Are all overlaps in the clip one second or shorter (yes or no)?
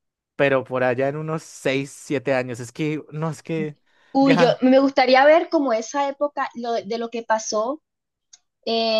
yes